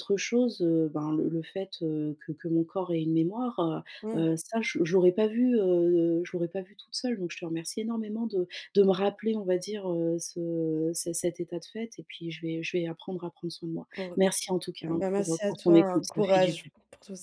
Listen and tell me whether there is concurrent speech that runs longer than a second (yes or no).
yes